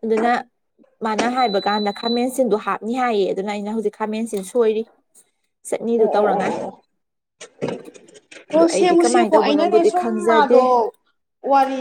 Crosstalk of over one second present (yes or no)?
yes